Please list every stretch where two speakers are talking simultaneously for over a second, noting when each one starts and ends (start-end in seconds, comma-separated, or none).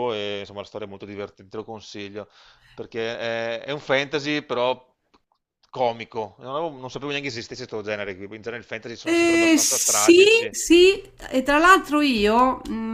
9.1-10.5